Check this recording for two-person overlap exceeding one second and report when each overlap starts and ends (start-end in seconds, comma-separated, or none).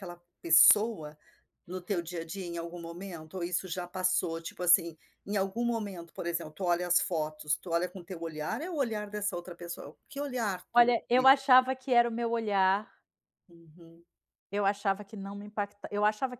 none